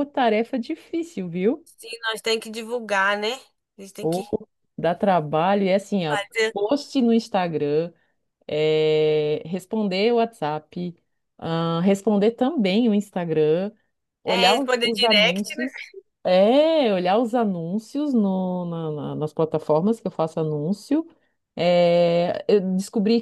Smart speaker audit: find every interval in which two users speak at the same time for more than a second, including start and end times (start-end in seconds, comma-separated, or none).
14.3-15.7